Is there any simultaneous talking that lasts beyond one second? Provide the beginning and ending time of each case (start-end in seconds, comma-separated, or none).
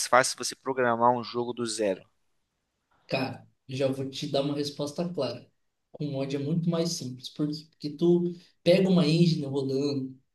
none